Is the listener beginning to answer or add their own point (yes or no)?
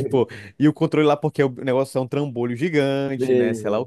no